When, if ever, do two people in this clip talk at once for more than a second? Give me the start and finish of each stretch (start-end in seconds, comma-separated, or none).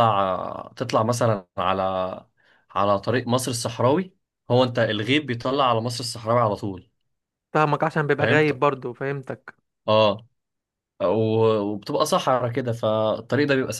none